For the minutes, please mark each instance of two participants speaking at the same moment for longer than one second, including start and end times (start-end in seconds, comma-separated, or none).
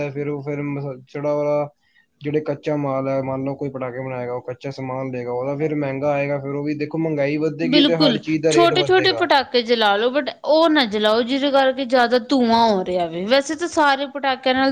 none